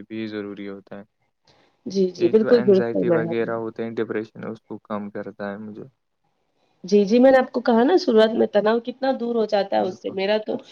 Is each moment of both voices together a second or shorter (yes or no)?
no